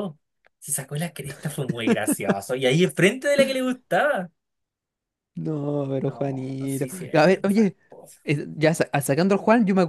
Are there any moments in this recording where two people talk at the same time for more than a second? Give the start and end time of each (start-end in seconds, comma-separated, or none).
6.0-7.8